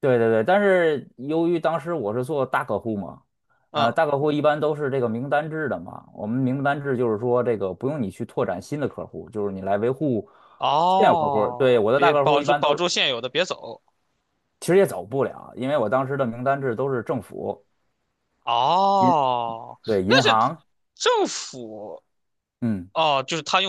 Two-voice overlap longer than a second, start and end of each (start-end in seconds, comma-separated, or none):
11.0-12.8